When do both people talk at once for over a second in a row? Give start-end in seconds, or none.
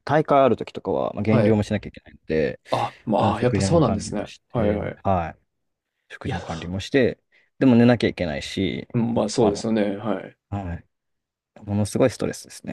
3.2-5.0